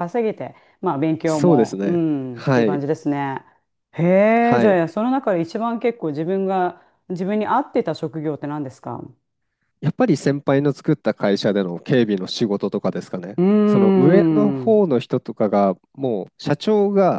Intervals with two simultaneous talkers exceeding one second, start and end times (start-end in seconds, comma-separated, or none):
1.3-2.9